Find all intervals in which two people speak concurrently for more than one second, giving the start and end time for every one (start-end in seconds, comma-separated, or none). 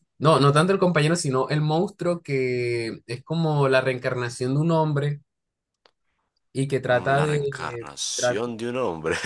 6.9-8.4